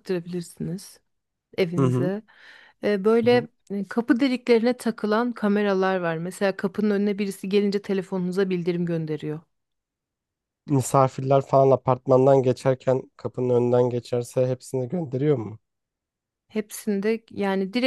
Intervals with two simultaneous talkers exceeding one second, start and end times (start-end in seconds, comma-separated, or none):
none